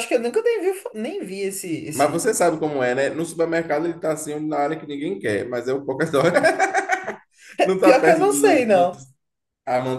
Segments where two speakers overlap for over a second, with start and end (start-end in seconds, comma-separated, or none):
7.8-9.0